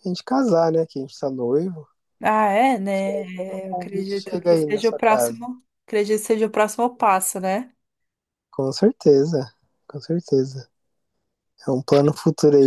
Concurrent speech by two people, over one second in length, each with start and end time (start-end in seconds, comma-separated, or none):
3.7-5.4